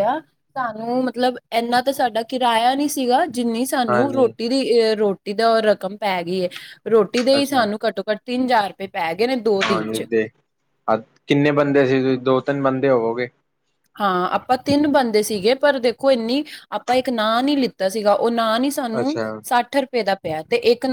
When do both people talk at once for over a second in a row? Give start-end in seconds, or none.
none